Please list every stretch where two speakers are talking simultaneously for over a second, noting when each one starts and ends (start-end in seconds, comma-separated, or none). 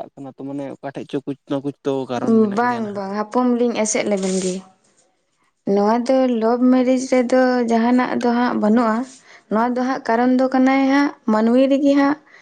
none